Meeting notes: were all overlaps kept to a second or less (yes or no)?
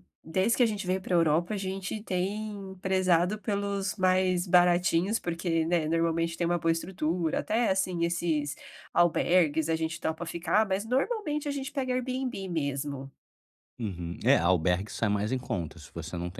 yes